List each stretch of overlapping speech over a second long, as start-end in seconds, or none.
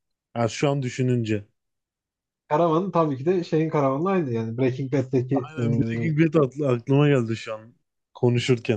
none